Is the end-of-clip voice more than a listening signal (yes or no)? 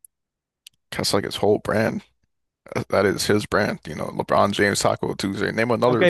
yes